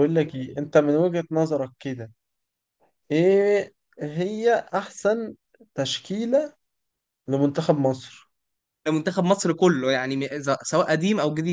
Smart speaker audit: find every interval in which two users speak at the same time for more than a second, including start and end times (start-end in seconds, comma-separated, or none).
none